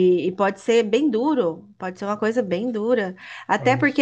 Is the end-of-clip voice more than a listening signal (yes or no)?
no